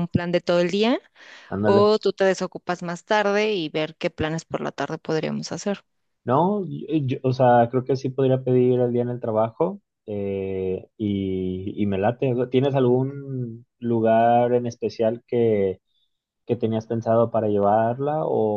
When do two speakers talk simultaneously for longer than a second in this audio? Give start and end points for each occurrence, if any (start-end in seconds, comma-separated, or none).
none